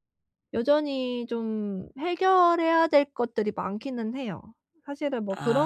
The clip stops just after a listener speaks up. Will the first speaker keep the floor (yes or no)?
yes